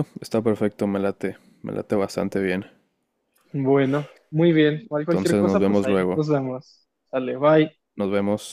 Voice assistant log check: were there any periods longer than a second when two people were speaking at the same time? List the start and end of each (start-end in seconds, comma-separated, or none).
5.0-6.2